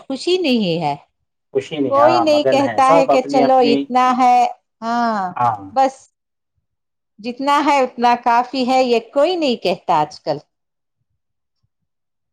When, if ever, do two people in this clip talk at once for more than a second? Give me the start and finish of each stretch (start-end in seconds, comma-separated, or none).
1.9-3.8